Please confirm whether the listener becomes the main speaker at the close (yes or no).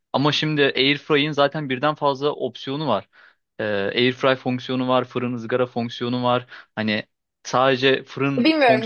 yes